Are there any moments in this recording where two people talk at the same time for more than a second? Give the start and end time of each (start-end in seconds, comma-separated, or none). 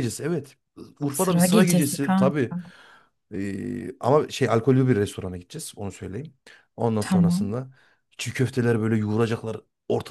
1.1-2.5